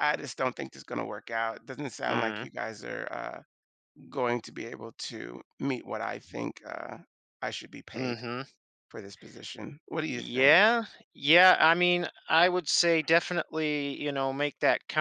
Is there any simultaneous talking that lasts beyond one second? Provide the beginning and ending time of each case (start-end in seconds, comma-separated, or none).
none